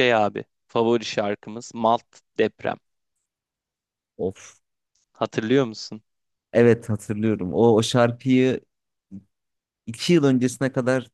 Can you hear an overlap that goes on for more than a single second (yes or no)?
no